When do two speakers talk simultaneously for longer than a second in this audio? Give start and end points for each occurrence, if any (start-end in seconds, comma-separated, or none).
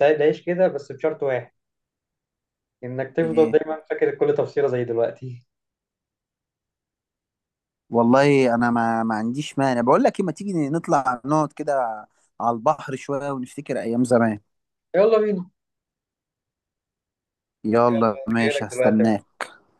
17.9-19.1